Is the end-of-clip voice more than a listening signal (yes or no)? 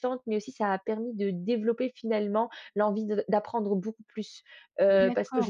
yes